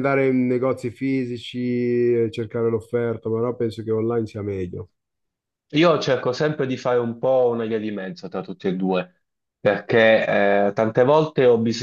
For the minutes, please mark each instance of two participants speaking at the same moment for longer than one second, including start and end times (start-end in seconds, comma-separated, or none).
none